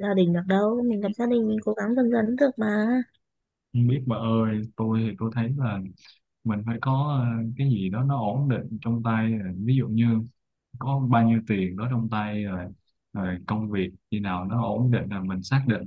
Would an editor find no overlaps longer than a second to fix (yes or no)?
yes